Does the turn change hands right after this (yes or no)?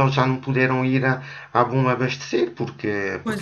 no